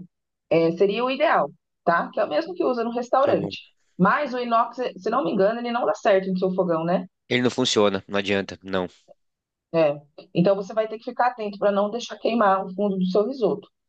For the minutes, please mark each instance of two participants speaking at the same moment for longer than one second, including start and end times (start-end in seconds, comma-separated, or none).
none